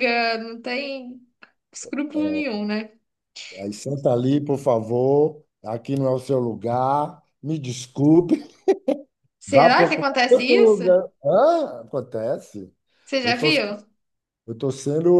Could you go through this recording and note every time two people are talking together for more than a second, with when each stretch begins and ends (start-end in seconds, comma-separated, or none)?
9.5-10.8